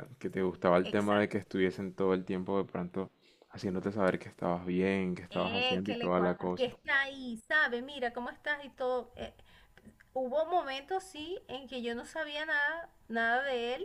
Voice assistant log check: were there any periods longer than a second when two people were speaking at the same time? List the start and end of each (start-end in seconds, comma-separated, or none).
5.3-6.7